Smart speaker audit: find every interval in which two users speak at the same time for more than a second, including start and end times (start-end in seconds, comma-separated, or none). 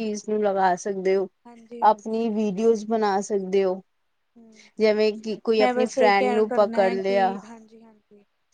6.0-7.3